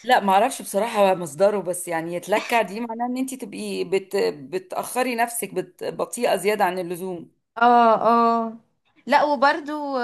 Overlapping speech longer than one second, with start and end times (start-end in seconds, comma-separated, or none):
none